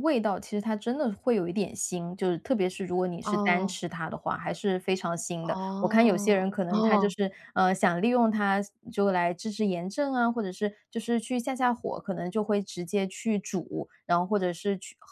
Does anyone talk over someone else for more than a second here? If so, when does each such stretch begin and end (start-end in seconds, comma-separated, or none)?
5.5-7.1